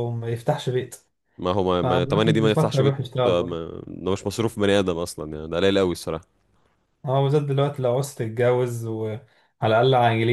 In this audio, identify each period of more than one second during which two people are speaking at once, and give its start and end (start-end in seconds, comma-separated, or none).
1.8-3.6